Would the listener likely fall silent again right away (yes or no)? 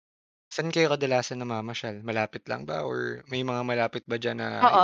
no